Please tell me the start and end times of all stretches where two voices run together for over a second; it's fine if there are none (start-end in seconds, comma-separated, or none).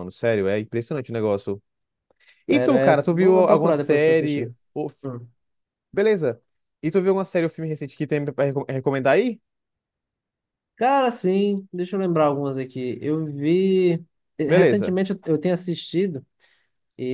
2.5-4.5